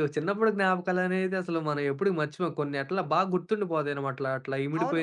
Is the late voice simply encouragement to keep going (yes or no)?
yes